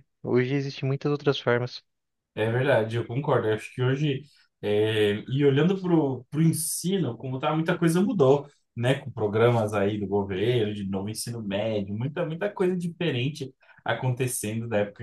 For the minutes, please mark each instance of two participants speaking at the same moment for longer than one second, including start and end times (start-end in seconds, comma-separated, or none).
none